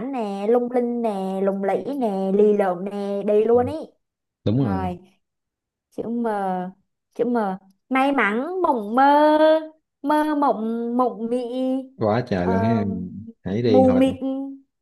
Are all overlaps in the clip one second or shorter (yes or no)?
yes